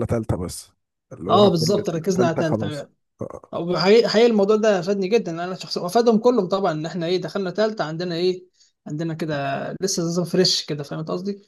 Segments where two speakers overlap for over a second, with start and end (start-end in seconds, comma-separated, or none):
1.3-2.7